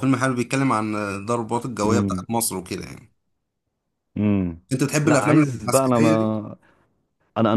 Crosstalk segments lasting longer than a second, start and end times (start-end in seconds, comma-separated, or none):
5.0-6.4